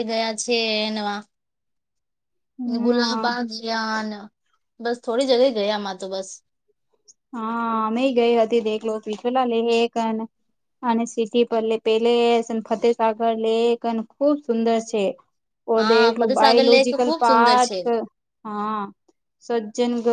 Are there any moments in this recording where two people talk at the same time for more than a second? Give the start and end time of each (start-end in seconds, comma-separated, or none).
15.8-17.8